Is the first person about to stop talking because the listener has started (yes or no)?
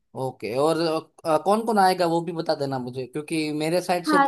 no